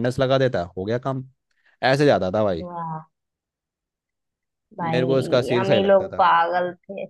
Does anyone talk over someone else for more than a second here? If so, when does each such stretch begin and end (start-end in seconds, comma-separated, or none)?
4.8-6.2